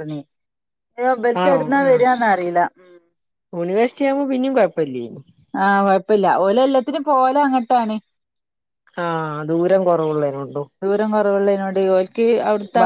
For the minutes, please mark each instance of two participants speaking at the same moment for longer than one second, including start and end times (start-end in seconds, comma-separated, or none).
none